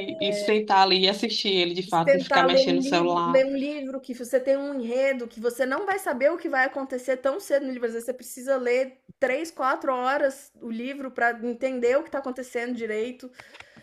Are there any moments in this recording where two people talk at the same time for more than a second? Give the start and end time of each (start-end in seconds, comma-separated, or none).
2.0-3.4